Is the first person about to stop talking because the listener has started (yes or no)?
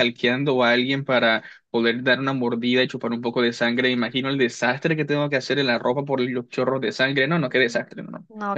yes